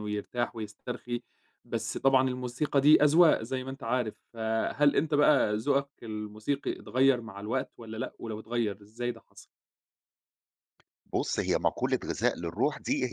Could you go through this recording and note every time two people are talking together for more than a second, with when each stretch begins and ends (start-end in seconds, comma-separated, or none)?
none